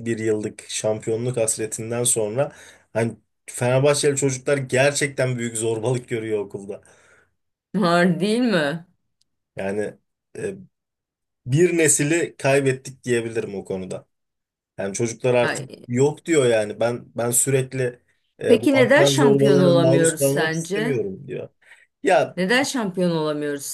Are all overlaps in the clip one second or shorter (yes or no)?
no